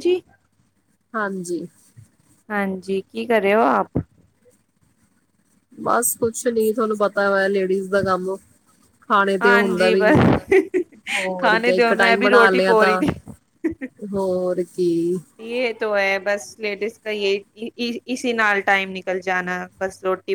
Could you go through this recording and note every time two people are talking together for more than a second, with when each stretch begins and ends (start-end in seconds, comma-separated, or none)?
11.4-13.0